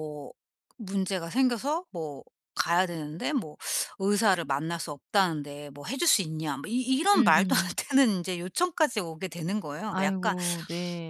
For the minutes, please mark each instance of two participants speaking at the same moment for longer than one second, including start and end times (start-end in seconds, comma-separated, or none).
none